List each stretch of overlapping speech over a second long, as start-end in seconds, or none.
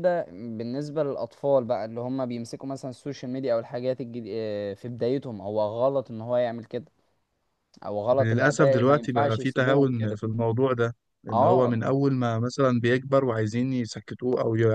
8.2-10.2